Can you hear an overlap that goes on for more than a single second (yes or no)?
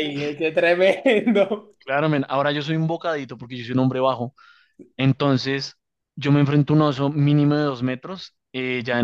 no